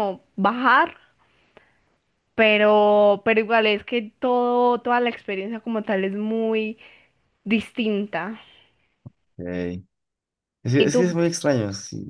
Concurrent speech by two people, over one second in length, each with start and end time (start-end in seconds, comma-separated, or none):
none